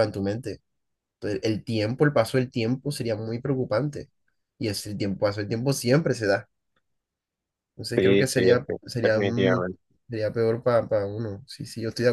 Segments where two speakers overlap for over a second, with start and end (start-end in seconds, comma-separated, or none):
8.0-9.7